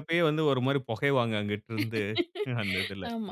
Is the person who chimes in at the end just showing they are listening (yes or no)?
no